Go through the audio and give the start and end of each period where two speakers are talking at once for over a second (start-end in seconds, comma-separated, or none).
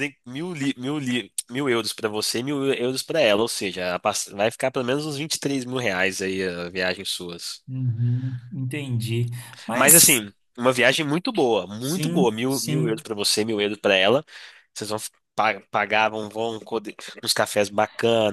11.8-13.0